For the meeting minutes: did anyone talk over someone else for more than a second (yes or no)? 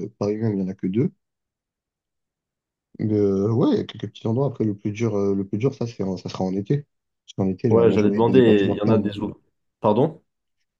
yes